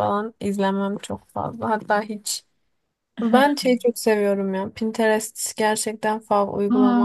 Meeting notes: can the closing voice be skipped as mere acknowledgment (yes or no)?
no